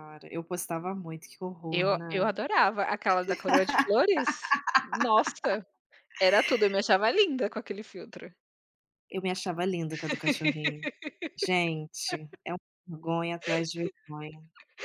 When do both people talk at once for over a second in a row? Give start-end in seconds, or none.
none